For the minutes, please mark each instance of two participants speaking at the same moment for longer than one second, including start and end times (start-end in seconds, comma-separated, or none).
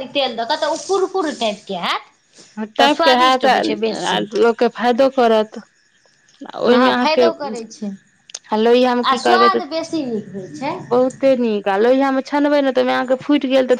2.8-4.2